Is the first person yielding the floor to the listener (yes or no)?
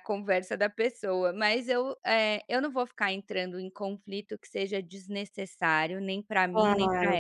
yes